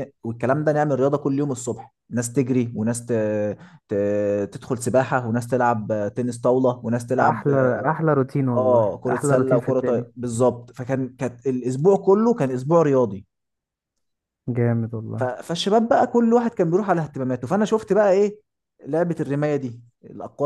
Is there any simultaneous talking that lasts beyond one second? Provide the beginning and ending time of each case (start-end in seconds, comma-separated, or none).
8.6-10.1